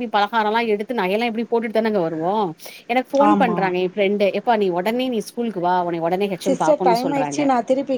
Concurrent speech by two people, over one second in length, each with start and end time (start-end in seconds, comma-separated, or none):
none